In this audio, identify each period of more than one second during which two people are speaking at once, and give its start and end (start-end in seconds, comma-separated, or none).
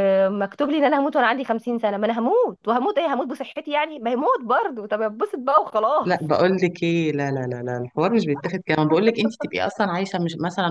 none